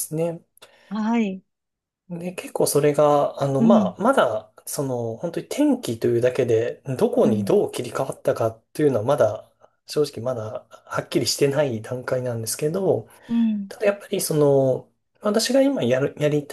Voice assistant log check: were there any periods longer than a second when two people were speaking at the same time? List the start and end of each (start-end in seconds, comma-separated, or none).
none